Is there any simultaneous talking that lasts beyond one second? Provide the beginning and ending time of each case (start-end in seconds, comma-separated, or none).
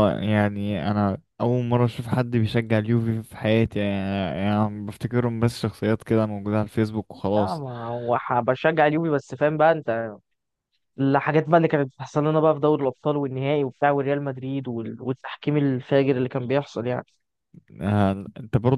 none